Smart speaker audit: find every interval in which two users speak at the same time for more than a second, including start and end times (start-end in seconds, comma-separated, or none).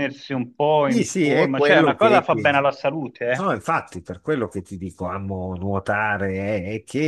0.8-2.6